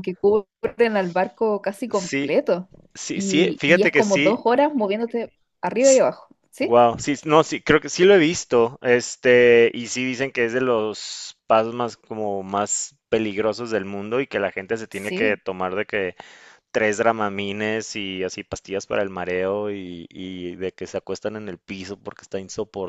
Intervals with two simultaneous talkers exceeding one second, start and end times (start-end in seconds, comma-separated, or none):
3.1-4.3